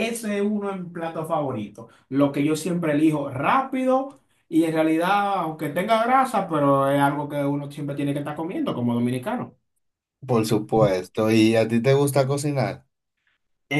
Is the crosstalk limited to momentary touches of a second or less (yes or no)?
yes